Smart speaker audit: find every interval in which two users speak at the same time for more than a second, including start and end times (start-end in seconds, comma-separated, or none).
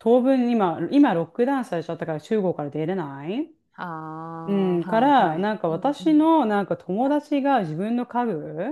4.8-6.3